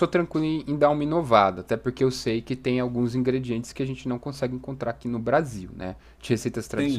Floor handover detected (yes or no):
yes